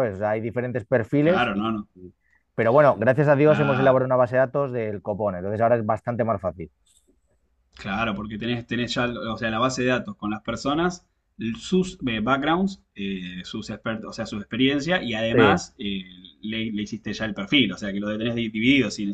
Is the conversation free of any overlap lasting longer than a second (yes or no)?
yes